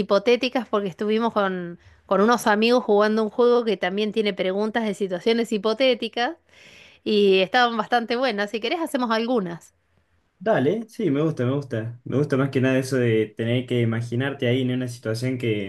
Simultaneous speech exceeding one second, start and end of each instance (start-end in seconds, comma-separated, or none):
none